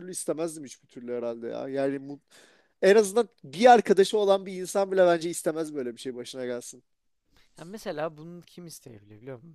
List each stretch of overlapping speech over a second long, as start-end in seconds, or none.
none